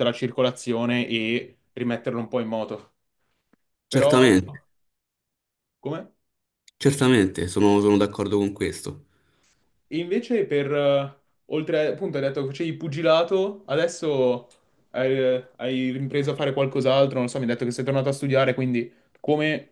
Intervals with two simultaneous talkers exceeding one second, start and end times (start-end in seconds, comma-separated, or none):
none